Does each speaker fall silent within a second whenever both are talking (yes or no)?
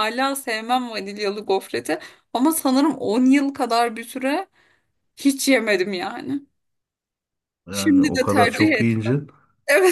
no